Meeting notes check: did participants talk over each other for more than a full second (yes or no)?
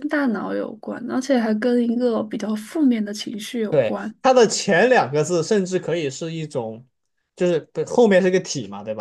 no